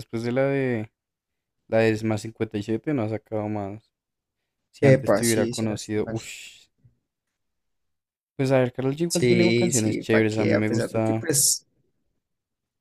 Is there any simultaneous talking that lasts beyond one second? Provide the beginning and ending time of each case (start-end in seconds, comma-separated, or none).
4.8-6.2, 9.1-11.3